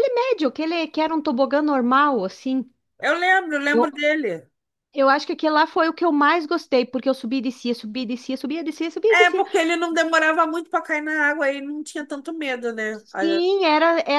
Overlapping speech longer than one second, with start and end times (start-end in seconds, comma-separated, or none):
none